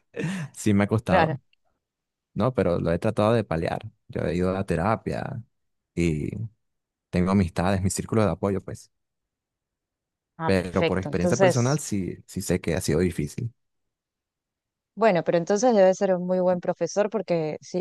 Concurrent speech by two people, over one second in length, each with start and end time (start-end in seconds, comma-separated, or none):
10.4-11.8